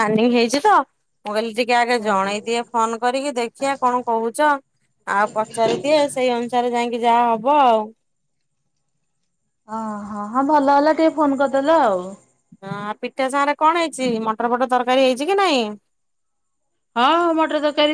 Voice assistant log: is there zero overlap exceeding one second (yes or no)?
yes